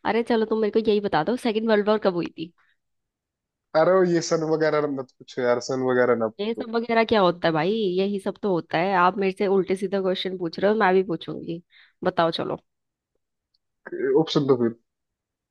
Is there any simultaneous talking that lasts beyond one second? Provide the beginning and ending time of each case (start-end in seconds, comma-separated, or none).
none